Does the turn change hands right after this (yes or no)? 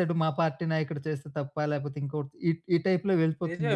yes